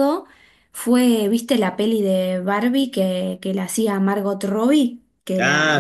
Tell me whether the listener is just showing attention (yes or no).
yes